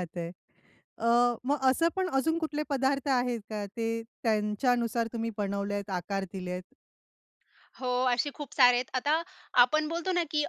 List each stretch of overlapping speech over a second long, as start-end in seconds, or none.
none